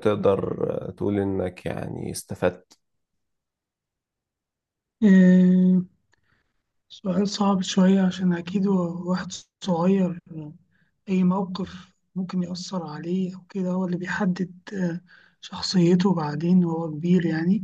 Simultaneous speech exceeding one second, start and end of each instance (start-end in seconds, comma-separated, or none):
none